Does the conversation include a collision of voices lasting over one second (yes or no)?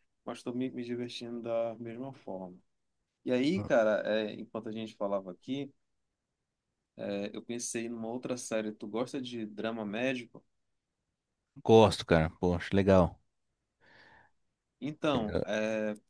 no